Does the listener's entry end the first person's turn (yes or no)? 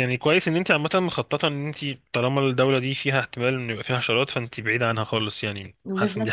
yes